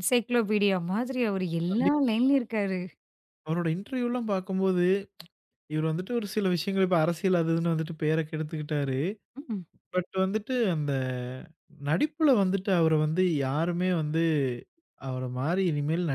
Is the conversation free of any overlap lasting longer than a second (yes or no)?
yes